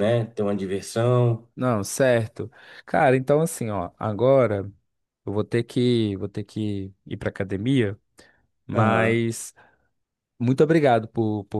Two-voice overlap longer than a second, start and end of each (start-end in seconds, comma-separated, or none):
none